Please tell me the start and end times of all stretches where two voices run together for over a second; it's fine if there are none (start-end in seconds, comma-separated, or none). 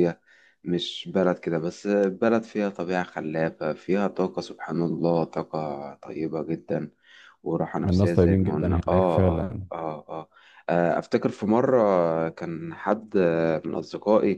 7.9-9.7